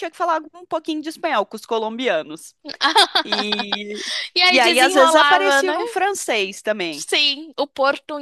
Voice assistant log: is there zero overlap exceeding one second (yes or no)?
no